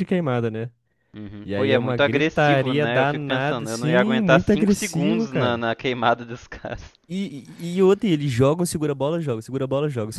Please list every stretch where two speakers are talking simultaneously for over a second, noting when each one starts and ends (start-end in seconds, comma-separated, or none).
1.4-5.6